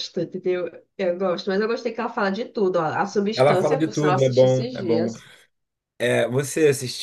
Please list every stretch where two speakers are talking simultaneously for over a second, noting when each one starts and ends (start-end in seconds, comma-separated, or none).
3.3-5.1